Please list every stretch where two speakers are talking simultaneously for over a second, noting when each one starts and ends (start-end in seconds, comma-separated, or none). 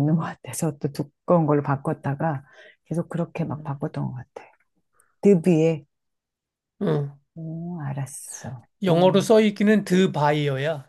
none